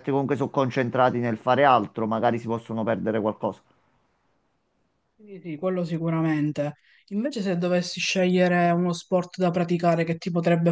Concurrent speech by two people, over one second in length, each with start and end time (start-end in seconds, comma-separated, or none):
none